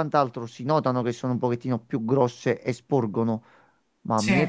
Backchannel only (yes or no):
yes